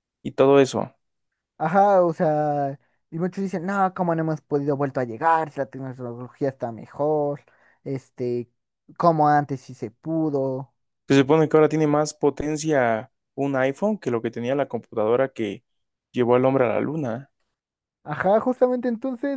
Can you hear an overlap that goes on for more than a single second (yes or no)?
no